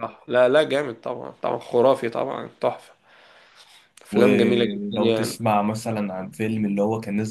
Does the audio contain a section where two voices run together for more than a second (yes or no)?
yes